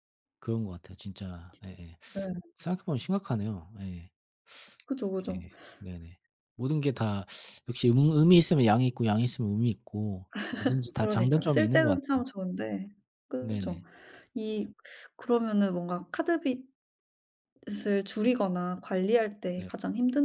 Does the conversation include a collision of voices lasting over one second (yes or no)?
yes